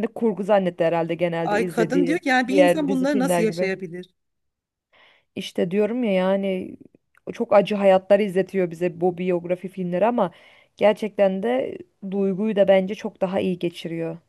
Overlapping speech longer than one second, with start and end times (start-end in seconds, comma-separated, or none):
1.4-3.7